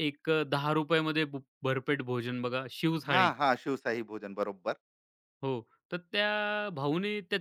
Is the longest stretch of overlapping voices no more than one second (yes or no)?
yes